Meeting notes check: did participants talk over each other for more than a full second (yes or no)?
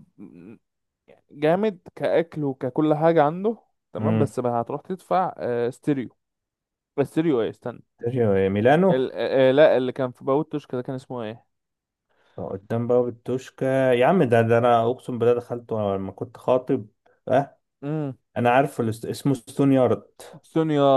no